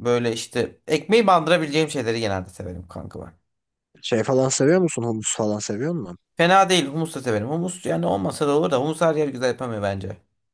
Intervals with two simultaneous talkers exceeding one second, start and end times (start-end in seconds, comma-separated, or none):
none